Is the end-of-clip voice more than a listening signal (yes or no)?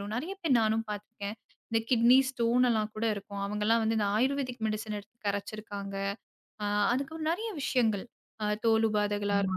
no